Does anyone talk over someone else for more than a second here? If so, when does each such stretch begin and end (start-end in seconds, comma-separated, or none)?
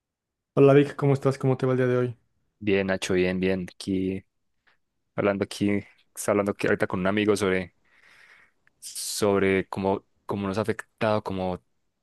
none